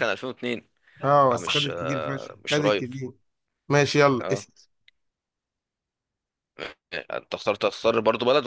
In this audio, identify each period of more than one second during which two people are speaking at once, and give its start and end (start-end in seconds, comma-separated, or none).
1.3-2.9